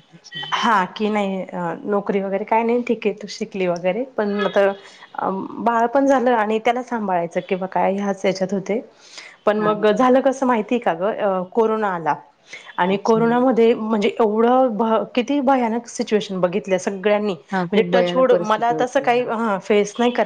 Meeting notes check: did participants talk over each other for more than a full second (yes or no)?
yes